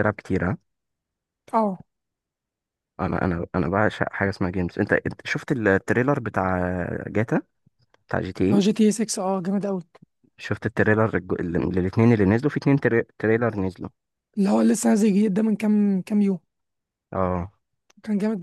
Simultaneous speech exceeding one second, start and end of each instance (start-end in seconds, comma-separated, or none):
none